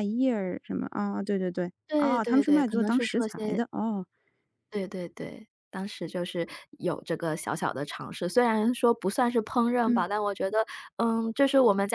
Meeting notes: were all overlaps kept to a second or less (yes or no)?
no